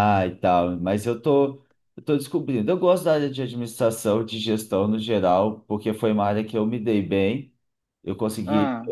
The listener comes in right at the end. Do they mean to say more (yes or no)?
no